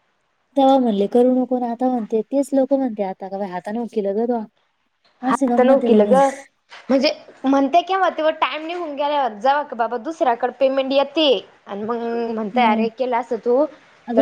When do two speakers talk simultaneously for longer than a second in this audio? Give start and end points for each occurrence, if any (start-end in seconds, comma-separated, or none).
none